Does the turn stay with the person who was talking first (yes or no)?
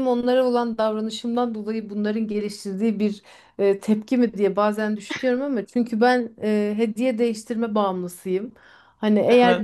yes